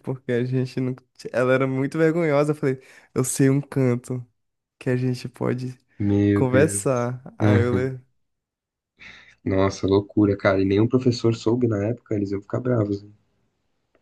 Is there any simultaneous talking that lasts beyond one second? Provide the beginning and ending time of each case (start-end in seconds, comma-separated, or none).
6.3-7.9